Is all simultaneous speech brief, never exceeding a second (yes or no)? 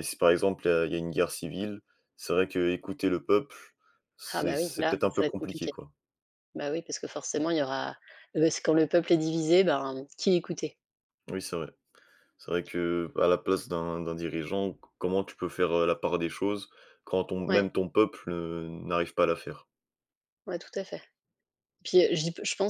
no